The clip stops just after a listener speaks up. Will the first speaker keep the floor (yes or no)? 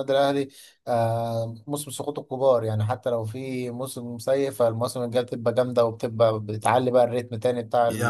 no